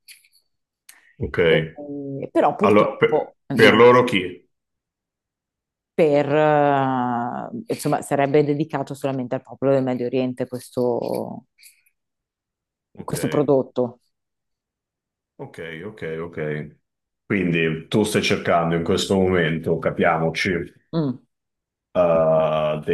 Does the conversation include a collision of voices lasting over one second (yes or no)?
yes